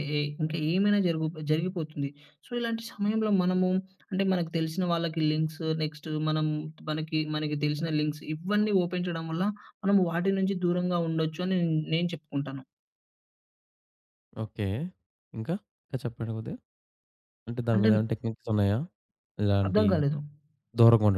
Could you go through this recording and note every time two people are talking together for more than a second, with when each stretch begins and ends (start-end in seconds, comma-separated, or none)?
none